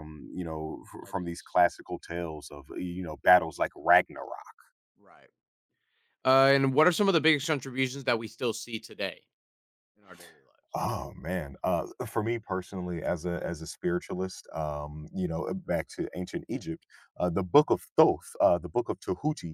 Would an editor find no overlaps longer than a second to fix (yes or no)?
yes